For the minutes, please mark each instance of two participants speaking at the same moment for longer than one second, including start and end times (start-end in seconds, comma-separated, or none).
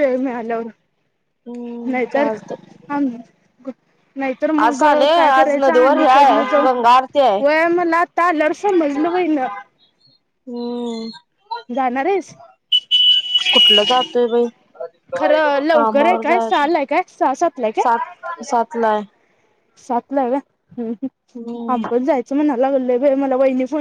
4.8-6.7, 15.2-16.6